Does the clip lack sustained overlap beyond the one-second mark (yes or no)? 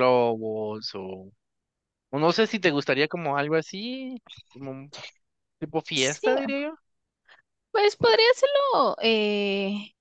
yes